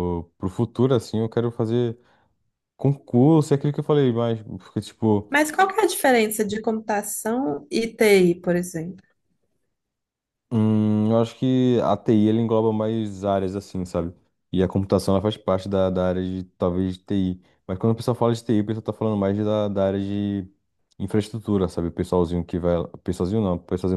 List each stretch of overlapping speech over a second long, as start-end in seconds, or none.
none